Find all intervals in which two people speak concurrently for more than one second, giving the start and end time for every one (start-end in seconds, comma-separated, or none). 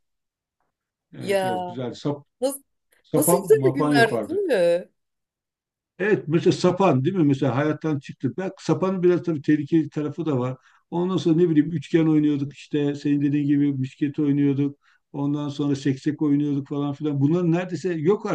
3.1-4.4